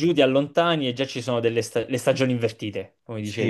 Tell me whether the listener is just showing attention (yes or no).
no